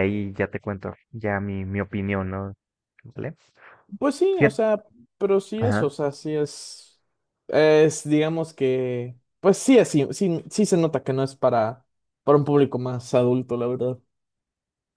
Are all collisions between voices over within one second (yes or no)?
yes